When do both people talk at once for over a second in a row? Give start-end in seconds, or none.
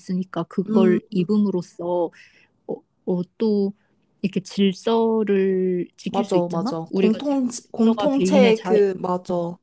6.1-8.8